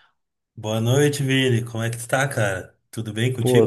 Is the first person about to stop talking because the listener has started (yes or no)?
yes